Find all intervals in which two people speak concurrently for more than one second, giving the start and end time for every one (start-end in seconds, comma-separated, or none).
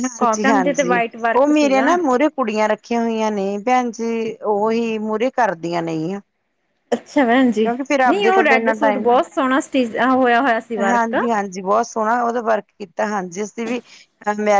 none